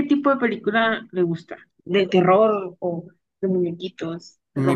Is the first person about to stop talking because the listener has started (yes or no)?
yes